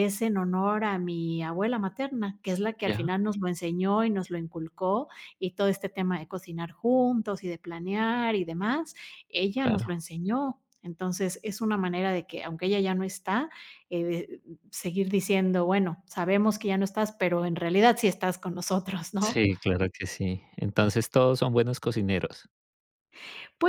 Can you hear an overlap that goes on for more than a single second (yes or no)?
no